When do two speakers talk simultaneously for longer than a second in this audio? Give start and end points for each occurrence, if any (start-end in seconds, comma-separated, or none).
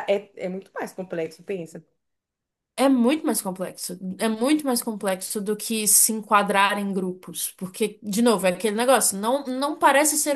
none